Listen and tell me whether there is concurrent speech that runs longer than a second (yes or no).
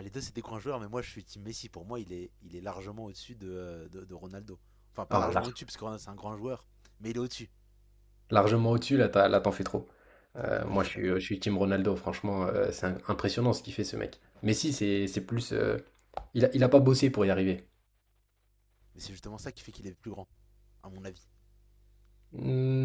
no